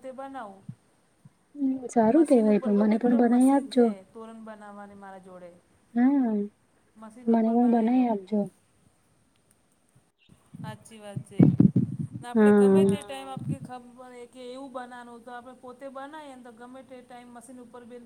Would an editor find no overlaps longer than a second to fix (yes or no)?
no